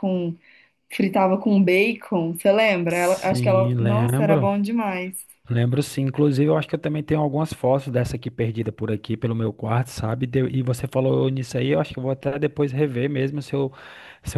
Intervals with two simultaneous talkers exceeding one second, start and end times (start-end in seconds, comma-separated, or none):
2.9-4.5